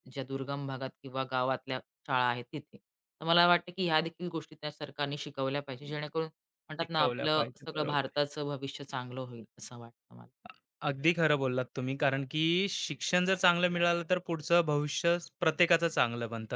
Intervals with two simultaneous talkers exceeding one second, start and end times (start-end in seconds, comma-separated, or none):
6.8-8.3